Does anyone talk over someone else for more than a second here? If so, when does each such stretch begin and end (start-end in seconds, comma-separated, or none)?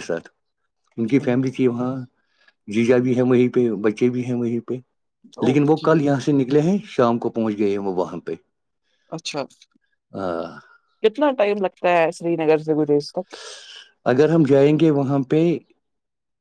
none